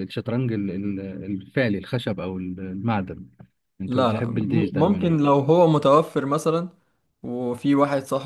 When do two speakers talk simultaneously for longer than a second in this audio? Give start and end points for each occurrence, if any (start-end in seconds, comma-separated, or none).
3.9-5.2